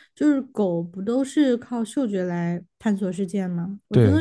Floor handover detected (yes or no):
no